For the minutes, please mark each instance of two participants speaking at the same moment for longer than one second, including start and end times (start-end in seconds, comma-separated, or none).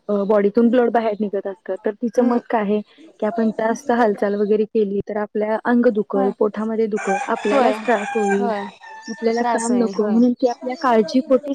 none